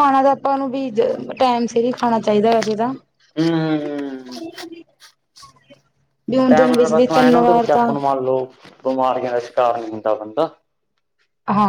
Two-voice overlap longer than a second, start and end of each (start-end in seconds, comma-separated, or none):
6.5-7.9